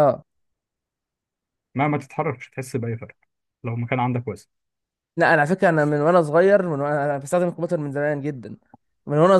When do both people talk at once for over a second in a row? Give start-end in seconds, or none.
none